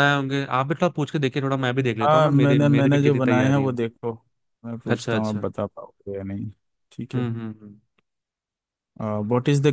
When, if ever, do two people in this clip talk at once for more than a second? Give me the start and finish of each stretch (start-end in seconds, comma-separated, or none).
2.0-3.8